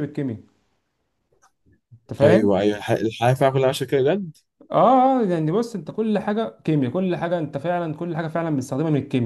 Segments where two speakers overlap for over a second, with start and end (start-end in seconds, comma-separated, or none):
none